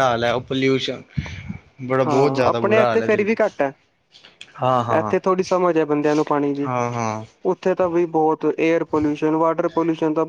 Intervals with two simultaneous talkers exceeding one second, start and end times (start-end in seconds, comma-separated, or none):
2.0-3.3